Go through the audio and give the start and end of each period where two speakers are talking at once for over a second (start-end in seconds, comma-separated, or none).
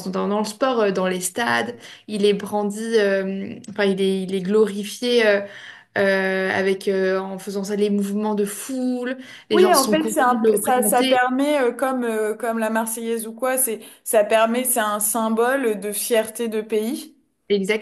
9.5-11.2